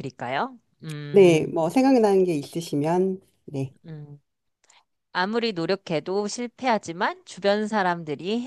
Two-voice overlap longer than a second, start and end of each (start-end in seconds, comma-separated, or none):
none